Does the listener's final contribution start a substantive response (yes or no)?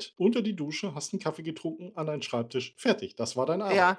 yes